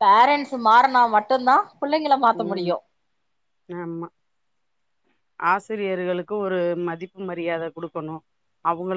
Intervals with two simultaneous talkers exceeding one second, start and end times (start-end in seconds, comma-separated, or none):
none